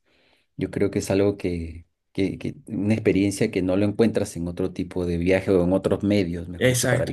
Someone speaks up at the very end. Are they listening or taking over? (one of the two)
taking over